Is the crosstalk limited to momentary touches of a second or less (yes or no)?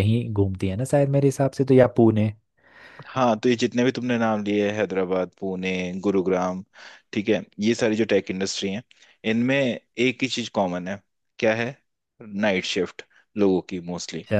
yes